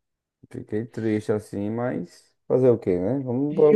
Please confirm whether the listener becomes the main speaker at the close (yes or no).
yes